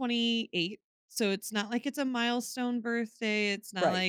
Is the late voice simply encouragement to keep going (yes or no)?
yes